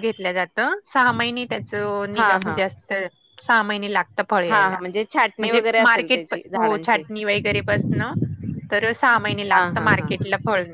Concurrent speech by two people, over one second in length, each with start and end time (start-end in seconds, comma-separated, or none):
5.4-7.0